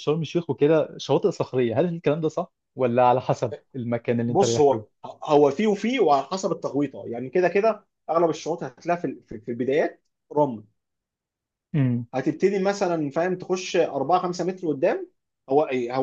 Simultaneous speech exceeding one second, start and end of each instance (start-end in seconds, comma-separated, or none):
none